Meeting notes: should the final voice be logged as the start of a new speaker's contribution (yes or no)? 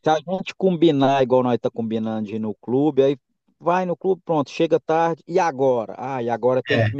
no